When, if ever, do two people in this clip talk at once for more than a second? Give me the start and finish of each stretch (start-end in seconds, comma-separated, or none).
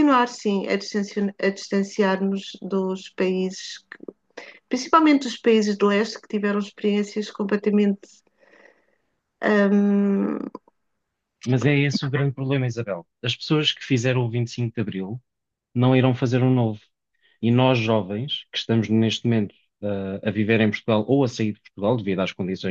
none